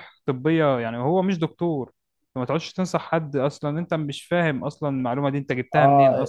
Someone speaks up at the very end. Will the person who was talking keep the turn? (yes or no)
no